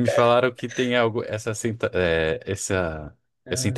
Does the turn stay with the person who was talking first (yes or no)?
yes